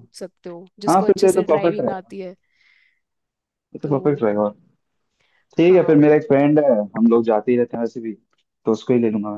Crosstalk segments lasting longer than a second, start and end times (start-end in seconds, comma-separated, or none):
0.9-2.1